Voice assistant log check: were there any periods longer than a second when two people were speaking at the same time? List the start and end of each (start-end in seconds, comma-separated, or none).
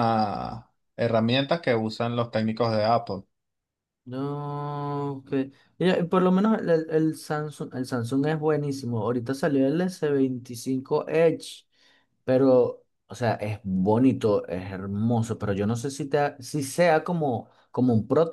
none